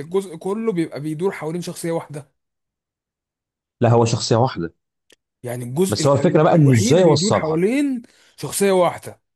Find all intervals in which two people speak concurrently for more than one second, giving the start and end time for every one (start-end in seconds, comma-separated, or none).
5.9-7.6